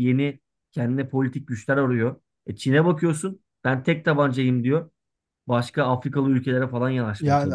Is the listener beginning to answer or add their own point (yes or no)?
yes